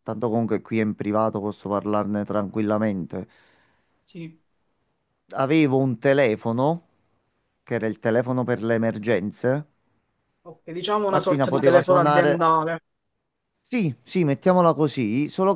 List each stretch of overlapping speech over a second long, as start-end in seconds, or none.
11.1-12.4